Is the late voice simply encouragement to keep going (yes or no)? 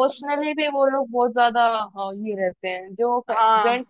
yes